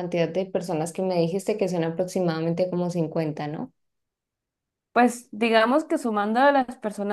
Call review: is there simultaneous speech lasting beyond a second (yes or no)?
no